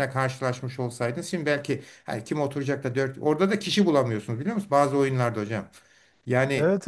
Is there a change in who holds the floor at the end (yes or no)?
yes